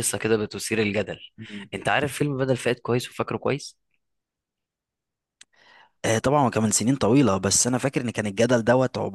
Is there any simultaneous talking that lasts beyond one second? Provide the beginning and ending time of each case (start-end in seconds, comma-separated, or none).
none